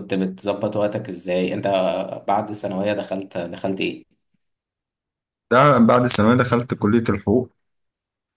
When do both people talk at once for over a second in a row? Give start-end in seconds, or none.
none